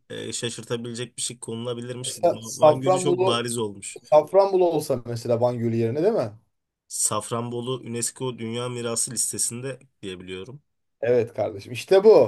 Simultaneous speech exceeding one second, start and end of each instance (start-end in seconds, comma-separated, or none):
2.1-3.4